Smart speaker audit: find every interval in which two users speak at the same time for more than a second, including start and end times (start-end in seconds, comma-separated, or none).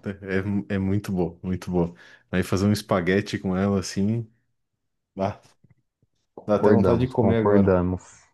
6.5-7.8